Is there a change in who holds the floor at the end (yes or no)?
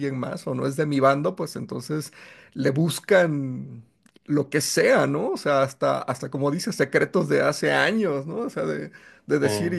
no